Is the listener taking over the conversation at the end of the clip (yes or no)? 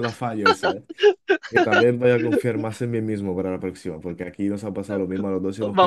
yes